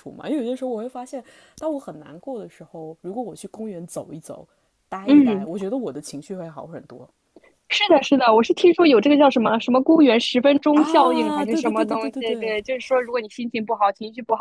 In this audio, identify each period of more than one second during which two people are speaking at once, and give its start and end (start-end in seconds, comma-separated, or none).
10.7-12.6